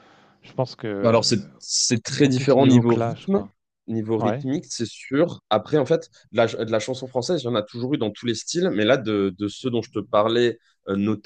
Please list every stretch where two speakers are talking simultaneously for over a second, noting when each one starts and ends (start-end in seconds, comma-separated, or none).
2.1-3.4